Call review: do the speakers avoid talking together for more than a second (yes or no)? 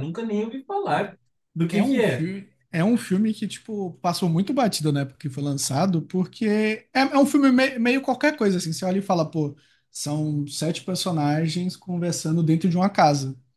yes